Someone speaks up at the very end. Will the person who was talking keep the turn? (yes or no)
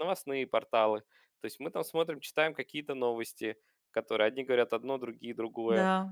no